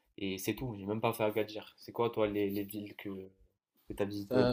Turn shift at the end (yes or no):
yes